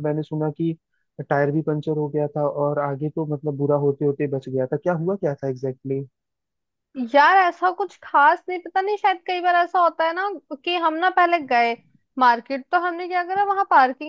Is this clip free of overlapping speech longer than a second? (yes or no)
yes